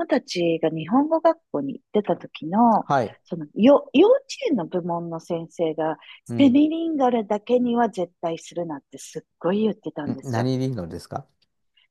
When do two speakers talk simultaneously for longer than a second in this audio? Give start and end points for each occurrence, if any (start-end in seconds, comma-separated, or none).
none